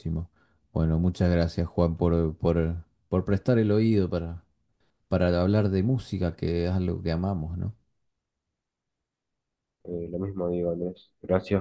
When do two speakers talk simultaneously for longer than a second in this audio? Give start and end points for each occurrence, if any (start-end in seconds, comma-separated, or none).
none